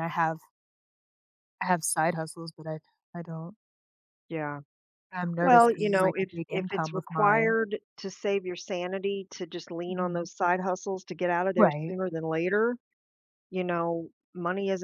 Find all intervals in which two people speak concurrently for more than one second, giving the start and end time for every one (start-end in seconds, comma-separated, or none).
5.4-7.5